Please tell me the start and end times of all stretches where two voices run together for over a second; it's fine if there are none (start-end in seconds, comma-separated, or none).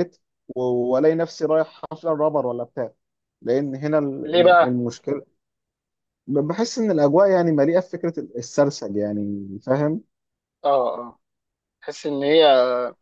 none